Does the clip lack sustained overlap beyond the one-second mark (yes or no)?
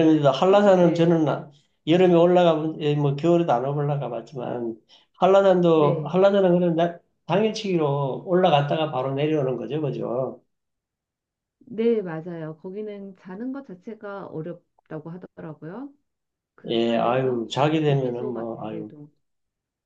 no